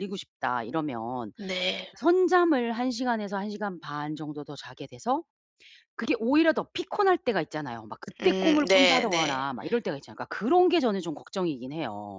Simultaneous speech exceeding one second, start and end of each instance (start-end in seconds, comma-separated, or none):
8.2-9.5